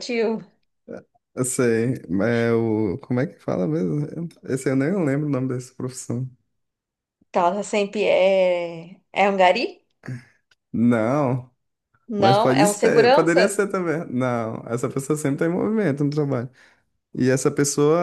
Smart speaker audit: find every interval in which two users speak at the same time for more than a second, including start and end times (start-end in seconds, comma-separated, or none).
12.2-13.5